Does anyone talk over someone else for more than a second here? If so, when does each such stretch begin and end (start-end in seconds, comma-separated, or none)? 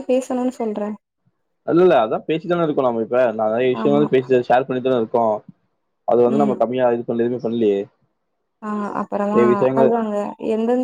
none